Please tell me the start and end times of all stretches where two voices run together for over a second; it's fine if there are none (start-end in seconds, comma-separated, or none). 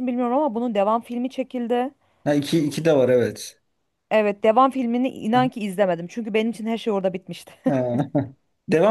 none